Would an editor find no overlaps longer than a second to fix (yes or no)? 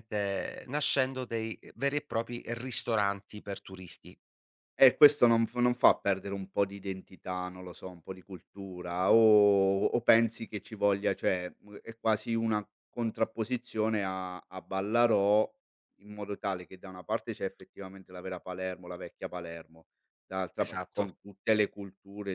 yes